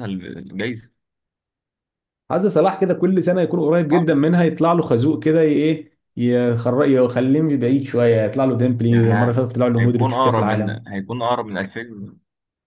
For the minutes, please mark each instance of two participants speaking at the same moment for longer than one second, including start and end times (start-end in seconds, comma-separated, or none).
8.9-10.9